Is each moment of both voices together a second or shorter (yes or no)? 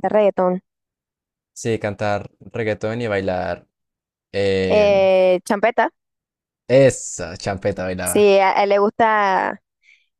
yes